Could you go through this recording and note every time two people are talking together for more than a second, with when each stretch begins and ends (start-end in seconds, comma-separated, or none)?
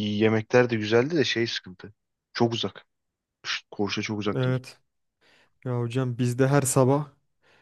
none